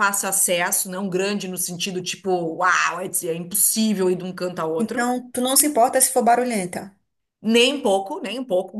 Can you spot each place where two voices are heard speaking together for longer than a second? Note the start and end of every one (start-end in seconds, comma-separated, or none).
none